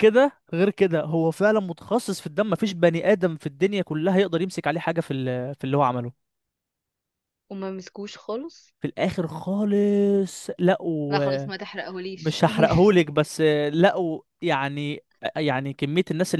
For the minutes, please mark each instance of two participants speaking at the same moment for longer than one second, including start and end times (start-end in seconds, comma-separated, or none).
none